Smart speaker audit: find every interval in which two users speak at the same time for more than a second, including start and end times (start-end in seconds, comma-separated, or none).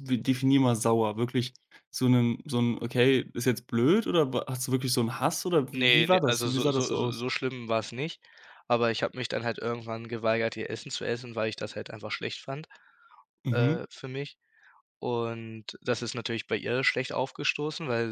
5.7-7.2